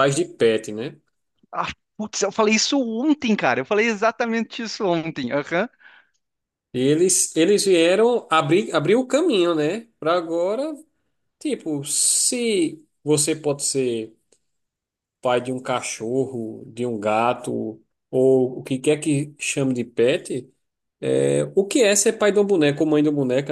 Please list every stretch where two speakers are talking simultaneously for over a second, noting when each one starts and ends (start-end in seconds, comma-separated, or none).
none